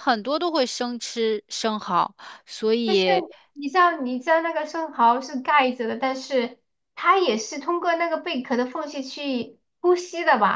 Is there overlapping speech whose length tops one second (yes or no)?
no